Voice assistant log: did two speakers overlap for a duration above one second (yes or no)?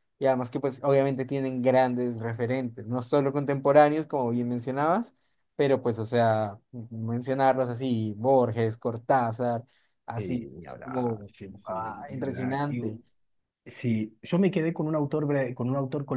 yes